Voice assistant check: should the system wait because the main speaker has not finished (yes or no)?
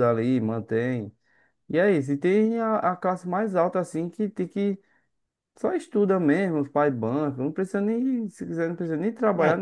no